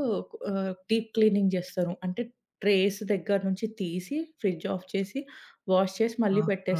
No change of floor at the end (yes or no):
no